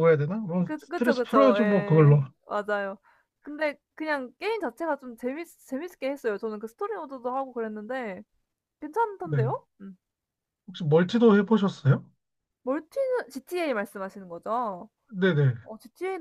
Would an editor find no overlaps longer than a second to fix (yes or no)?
no